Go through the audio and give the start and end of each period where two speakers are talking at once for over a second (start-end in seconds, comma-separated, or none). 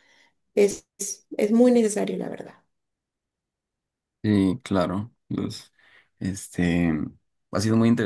none